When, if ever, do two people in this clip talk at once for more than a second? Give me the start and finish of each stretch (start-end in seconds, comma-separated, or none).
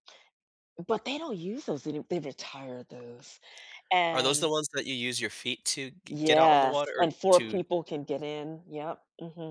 6.1-7.6